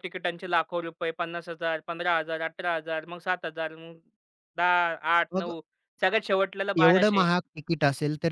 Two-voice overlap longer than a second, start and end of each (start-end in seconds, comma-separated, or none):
none